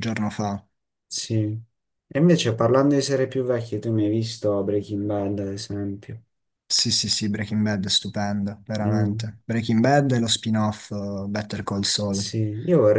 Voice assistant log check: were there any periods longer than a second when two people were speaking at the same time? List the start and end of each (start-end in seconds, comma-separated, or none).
none